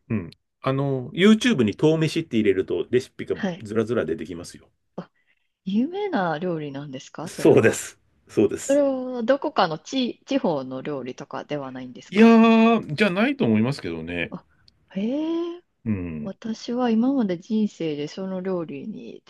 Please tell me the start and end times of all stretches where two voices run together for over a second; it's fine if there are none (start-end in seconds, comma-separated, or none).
none